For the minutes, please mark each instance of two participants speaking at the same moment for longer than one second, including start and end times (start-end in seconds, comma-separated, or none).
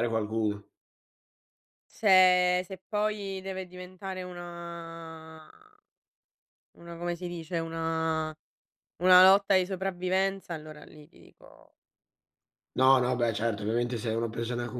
none